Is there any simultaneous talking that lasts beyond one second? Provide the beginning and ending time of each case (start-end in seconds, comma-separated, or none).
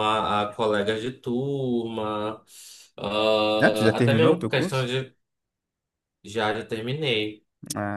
3.6-4.9